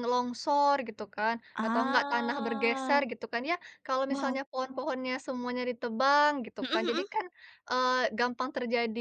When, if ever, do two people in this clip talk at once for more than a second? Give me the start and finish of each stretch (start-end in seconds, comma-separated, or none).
1.5-3.0